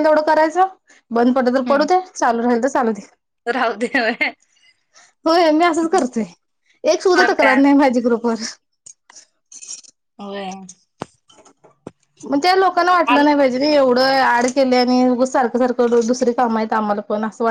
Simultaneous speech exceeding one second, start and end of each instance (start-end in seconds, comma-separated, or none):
none